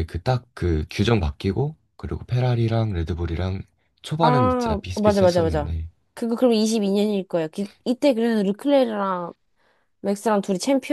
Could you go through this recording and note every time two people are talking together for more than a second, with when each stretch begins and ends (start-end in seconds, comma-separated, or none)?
4.2-5.7